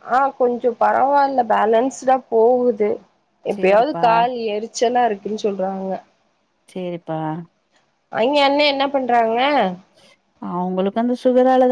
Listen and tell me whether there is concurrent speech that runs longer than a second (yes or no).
no